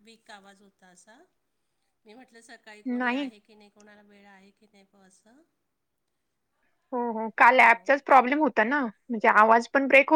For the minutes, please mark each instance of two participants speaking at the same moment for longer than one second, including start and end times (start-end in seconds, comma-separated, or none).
none